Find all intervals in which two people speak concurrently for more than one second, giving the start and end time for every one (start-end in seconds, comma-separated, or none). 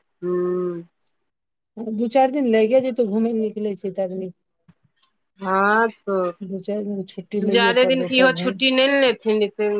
6.4-8.5